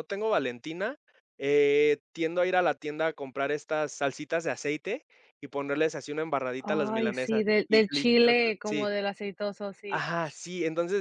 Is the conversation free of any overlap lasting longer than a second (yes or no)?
no